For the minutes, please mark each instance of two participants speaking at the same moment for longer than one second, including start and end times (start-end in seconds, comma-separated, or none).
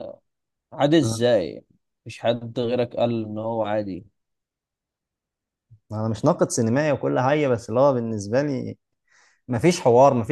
none